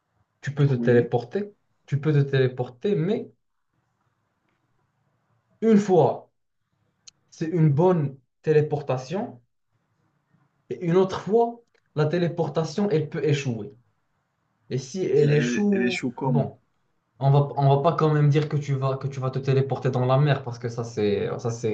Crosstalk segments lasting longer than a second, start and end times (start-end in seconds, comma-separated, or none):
15.2-16.5